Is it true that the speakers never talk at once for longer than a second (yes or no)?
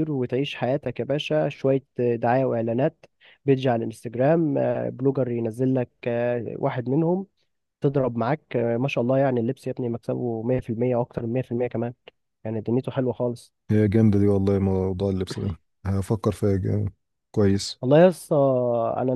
yes